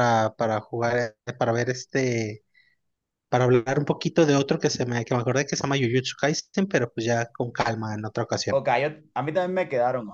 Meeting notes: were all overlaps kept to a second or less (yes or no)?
yes